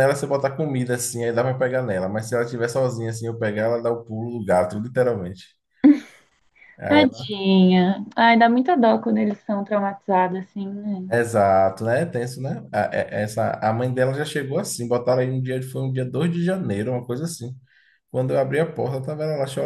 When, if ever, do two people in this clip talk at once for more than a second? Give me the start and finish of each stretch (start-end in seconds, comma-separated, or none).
none